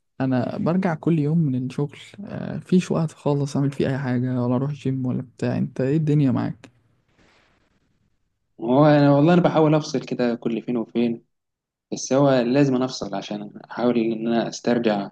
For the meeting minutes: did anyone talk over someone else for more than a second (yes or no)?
no